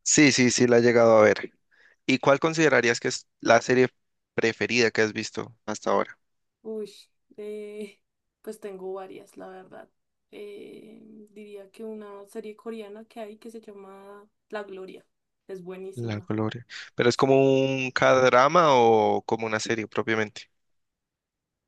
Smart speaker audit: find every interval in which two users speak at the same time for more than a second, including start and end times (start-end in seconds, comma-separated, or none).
none